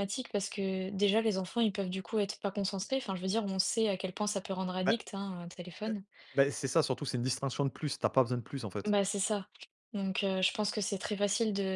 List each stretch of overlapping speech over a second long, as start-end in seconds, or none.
none